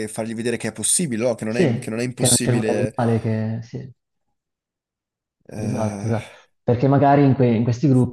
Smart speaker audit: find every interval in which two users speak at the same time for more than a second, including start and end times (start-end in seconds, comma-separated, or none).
1.5-3.0